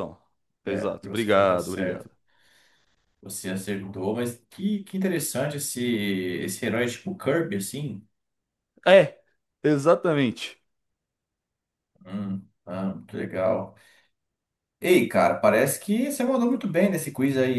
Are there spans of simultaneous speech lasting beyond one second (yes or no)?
yes